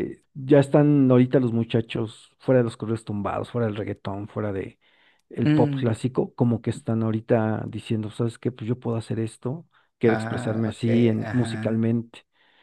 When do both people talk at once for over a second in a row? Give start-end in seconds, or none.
10.2-11.9